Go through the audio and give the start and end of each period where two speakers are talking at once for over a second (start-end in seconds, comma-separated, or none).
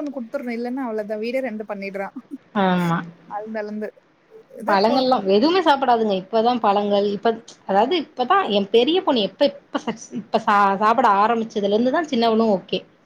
none